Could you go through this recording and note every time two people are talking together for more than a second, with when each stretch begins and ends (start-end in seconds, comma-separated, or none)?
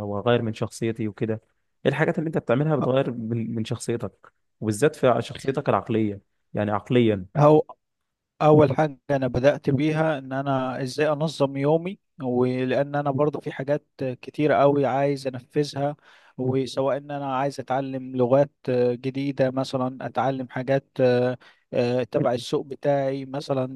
none